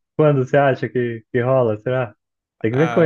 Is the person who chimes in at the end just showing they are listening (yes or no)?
no